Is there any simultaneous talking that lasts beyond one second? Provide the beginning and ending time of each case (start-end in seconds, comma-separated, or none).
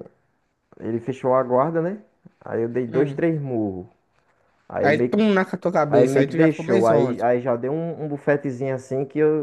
5.9-7.2